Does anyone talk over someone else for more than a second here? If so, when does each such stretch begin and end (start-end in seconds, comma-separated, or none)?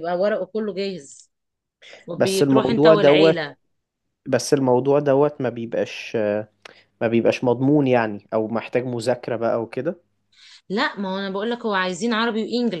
2.1-3.4